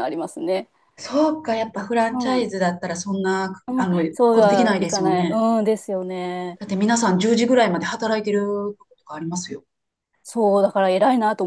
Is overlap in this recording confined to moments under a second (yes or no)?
no